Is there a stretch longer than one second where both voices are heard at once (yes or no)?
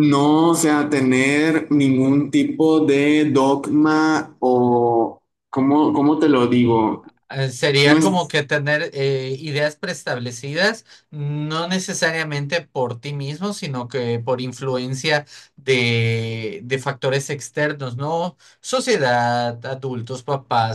no